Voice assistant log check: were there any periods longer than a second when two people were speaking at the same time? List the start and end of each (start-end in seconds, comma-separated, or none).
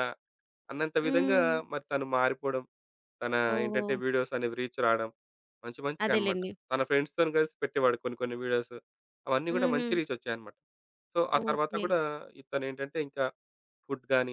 none